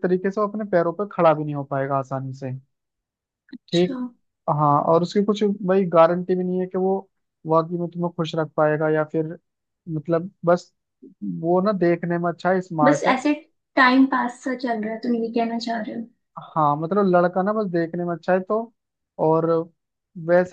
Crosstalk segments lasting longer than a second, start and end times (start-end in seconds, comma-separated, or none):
none